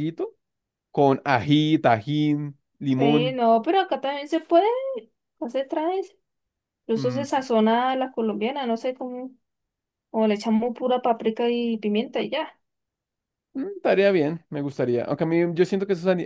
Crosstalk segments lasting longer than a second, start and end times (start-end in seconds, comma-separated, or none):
none